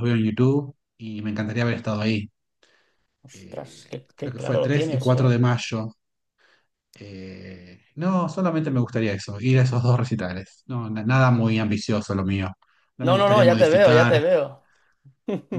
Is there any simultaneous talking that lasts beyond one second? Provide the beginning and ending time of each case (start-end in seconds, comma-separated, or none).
3.3-5.3, 13.0-14.2